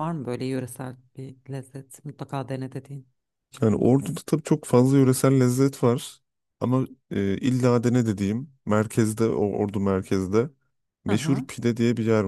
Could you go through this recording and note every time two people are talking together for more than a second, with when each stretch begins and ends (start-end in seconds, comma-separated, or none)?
none